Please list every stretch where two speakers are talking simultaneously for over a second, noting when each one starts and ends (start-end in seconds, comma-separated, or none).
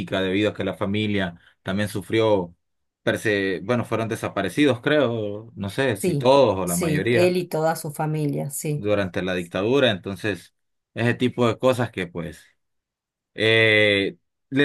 5.9-7.4